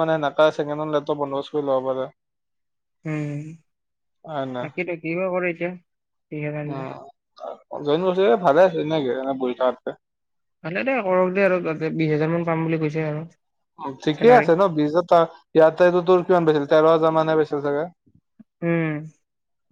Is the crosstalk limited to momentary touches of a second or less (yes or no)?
yes